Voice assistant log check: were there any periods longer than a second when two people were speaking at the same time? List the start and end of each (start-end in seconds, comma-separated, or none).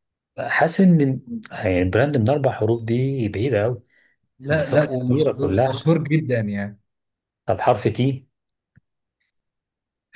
4.5-5.8